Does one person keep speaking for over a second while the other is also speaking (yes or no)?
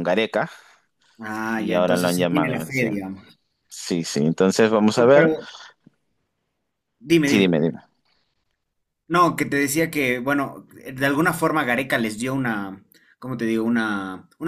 yes